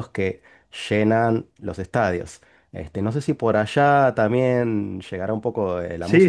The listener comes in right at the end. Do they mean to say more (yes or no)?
yes